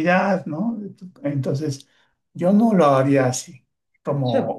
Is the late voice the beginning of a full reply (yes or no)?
yes